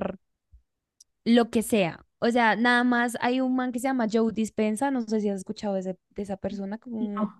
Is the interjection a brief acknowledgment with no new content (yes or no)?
yes